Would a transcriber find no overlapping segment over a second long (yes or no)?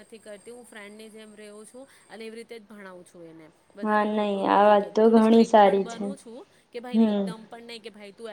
no